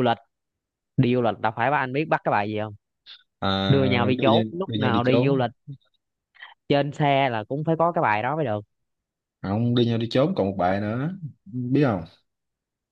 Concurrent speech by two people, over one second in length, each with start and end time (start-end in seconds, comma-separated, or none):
3.7-5.5